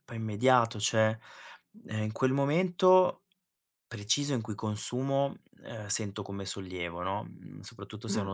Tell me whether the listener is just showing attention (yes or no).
yes